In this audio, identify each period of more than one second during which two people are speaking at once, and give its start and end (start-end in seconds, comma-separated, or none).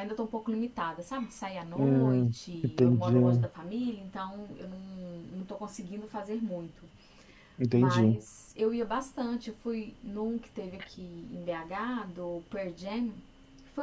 1.8-3.1